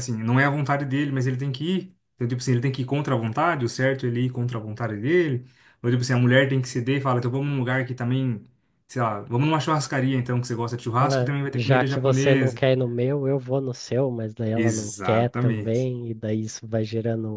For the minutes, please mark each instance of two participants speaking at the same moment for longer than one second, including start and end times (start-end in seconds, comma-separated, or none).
11.0-12.6, 14.6-15.9